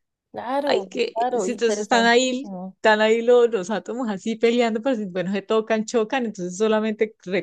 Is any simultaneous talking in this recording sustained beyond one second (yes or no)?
yes